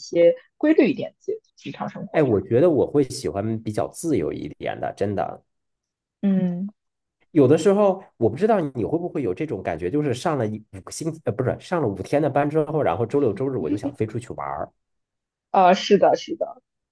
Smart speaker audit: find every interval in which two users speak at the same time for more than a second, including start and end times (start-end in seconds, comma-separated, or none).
none